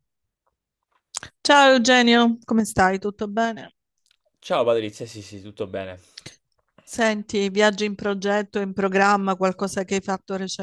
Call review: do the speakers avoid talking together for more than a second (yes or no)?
yes